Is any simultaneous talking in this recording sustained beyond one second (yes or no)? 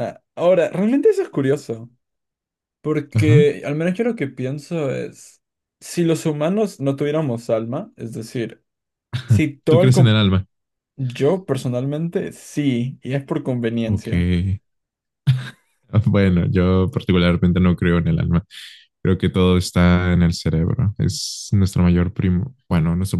no